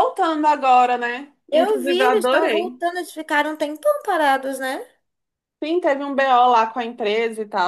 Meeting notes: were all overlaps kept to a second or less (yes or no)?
no